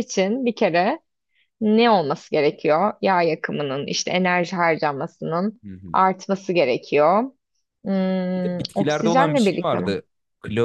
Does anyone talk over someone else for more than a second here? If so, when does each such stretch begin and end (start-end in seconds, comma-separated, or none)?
8.3-10.0